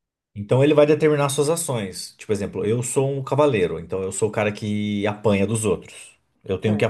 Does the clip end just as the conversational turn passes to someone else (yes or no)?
no